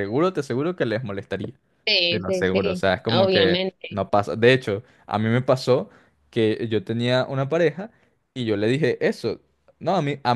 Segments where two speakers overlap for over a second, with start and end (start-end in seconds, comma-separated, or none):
2.1-3.9